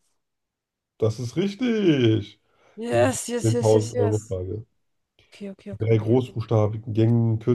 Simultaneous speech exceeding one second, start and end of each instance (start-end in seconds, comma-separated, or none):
2.9-4.3